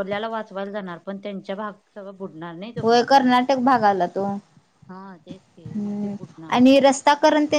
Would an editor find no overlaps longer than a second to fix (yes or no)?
yes